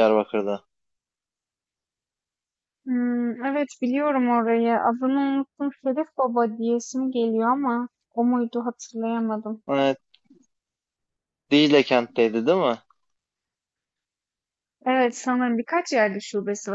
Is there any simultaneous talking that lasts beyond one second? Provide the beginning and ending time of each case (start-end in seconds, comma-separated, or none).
none